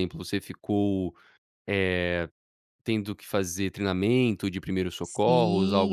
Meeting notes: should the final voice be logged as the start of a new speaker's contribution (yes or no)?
yes